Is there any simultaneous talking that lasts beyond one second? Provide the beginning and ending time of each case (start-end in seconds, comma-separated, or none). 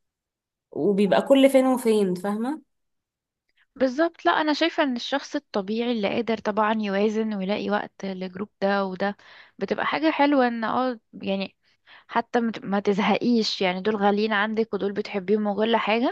none